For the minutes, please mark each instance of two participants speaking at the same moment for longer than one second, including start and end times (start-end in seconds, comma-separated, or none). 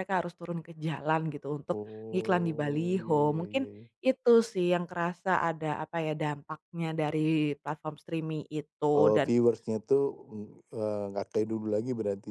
1.8-3.6